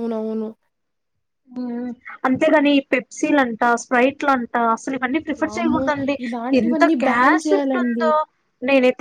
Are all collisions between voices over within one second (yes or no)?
no